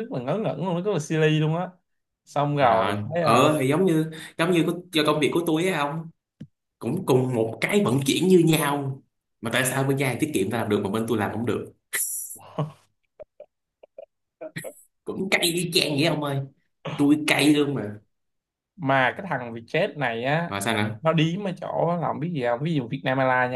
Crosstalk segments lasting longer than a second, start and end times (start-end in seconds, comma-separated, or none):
none